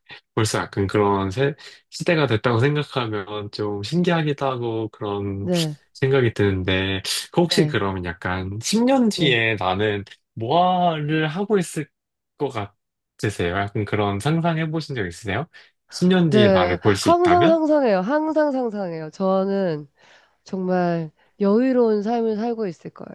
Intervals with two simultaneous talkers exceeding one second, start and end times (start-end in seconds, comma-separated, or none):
16.3-17.6